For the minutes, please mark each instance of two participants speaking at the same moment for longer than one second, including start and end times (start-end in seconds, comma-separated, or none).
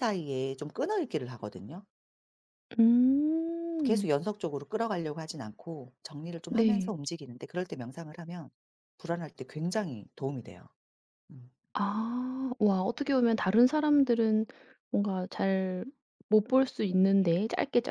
none